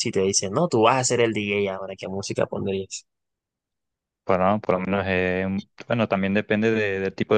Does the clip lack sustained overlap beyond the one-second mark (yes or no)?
yes